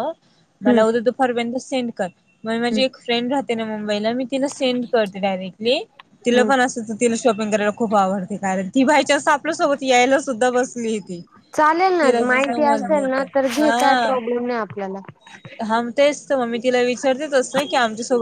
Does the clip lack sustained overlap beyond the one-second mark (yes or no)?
no